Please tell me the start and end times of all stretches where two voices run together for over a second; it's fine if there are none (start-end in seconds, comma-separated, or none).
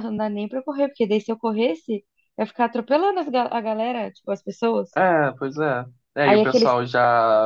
none